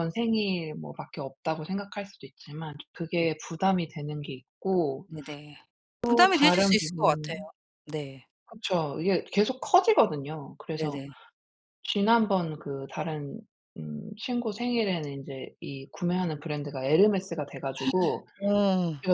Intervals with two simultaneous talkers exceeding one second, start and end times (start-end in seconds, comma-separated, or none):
6.0-7.5